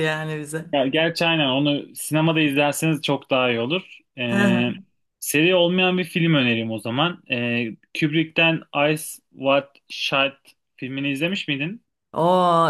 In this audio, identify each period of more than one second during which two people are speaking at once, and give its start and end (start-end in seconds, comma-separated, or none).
none